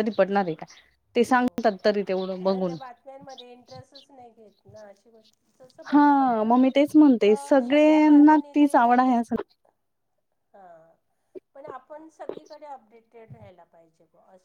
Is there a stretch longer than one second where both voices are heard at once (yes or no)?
yes